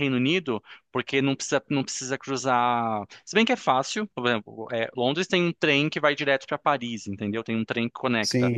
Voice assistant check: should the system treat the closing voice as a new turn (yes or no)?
yes